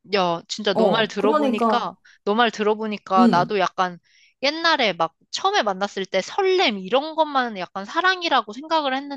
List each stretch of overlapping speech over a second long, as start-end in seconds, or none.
0.7-1.9